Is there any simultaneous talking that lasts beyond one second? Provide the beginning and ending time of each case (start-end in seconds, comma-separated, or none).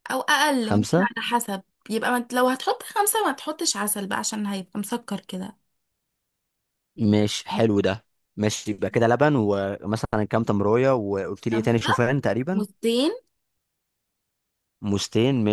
none